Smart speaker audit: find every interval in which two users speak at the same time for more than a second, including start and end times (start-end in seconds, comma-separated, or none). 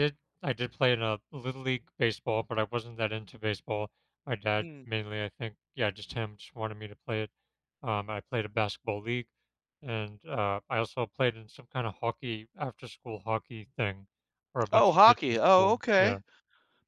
14.7-16.2